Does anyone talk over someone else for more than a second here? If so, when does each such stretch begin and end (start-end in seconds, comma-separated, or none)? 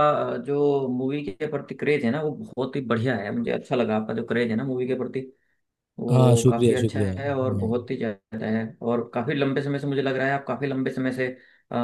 6.1-7.7